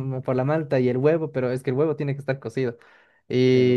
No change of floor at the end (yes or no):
yes